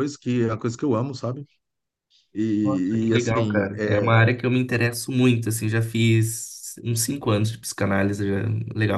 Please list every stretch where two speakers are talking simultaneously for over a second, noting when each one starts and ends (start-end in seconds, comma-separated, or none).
2.6-4.1